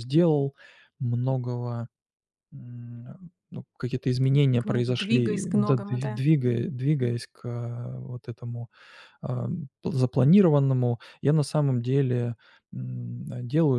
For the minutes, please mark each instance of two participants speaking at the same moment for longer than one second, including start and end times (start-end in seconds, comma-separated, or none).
4.6-6.2